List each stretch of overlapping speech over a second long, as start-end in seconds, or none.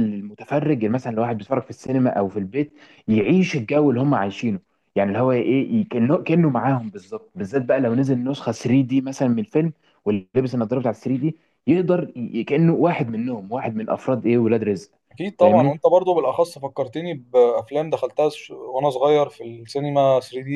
none